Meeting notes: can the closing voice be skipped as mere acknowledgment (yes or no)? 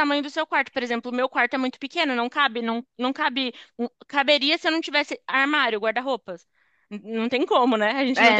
no